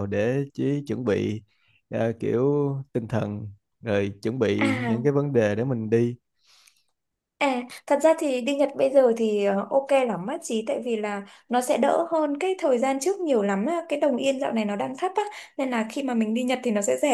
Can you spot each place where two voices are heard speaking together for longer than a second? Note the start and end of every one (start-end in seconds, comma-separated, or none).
none